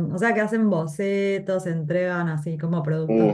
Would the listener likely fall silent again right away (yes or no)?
no